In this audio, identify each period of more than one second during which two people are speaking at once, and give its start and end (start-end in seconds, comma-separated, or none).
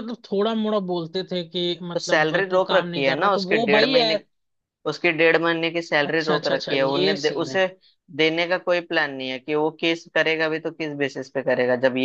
2.0-4.1, 6.1-7.6